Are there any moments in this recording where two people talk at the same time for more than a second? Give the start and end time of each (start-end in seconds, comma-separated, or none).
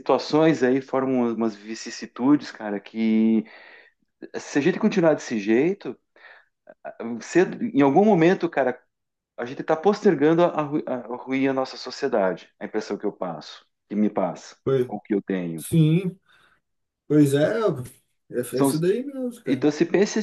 none